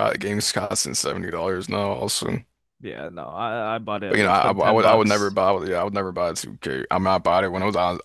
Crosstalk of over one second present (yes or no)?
yes